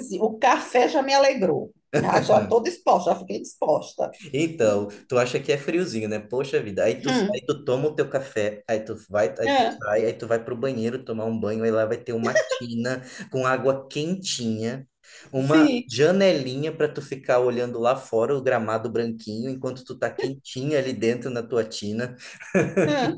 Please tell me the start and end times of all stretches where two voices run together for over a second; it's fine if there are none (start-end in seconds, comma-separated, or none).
none